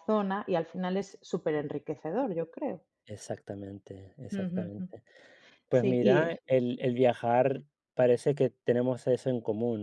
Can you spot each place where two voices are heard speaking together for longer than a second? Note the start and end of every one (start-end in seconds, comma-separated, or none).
none